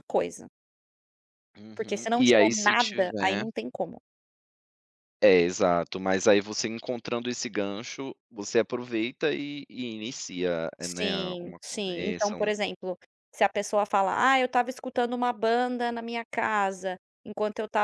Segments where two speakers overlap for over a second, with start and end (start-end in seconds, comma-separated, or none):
1.8-3.5, 10.8-12.5